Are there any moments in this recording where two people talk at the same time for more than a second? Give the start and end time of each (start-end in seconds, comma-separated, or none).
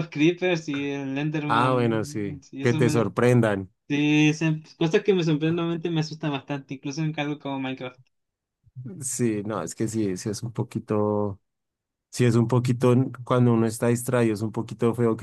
1.5-3.1